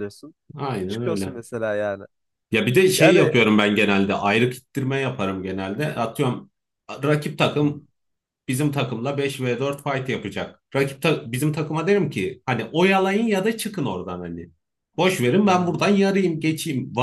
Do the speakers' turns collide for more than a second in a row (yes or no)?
no